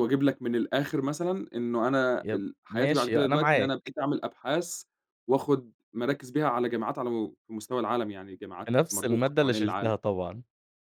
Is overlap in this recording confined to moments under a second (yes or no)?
no